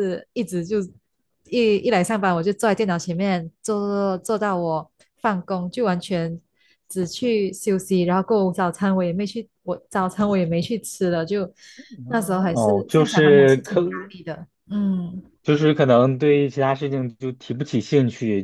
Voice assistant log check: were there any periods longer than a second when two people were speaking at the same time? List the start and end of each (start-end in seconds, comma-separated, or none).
12.5-13.8